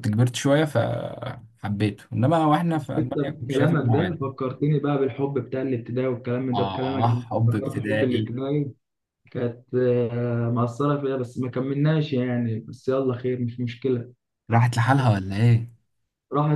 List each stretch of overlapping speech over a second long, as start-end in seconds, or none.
2.8-4.2, 6.5-8.3